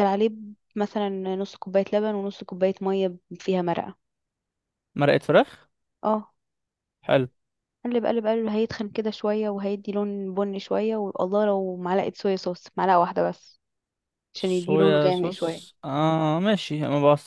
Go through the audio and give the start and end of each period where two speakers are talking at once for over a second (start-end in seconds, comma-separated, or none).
14.4-15.7